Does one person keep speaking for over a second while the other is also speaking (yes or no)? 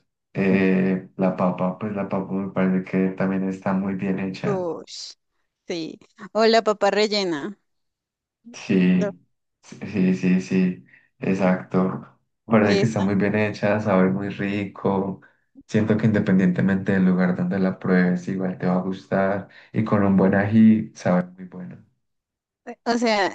no